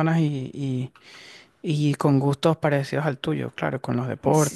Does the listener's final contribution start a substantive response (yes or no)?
yes